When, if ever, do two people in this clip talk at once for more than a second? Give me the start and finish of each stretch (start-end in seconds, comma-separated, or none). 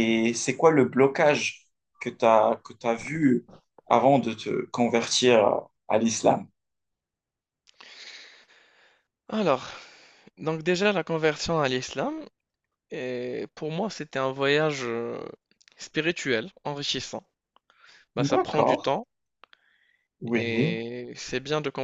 none